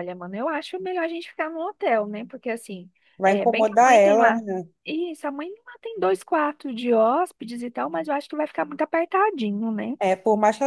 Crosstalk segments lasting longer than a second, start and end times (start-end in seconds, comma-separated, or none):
3.2-4.4